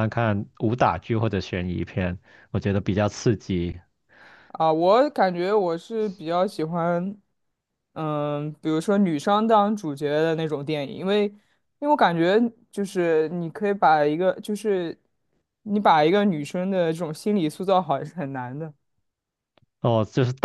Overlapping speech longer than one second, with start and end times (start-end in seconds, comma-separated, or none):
none